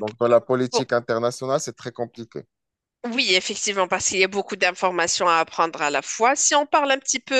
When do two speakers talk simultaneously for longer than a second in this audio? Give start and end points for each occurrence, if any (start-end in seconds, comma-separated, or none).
none